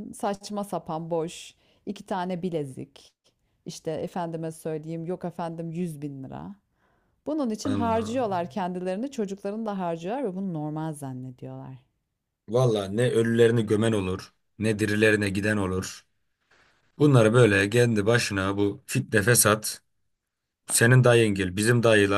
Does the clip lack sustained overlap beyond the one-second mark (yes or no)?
yes